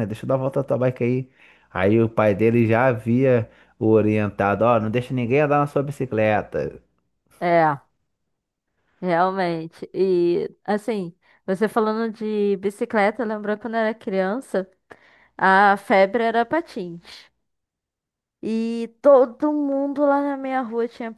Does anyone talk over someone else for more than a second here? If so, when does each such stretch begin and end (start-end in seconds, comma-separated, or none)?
none